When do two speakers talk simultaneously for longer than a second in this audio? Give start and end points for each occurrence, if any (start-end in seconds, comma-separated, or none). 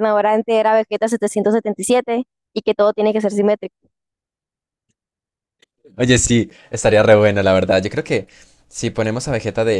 none